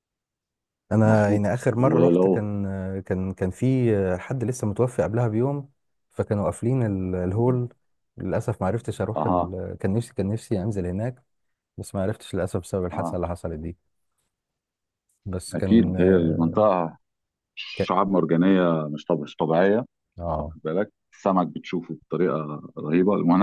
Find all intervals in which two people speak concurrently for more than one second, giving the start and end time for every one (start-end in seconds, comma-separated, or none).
1.0-2.5